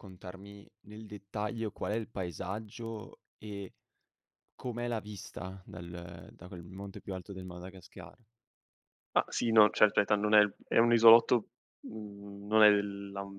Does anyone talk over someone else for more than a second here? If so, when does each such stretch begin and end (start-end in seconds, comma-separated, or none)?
none